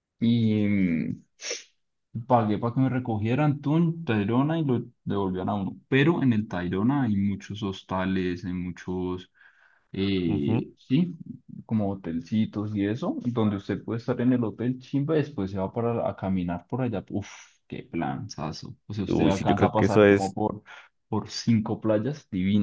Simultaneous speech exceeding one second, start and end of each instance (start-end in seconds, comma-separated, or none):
19.1-20.4